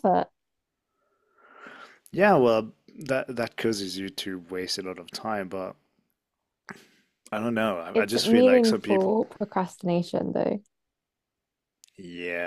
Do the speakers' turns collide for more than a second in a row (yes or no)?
yes